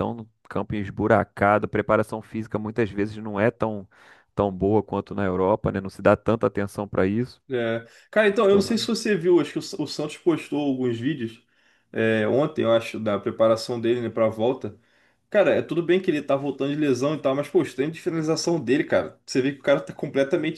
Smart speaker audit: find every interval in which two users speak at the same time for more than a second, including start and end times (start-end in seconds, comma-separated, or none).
none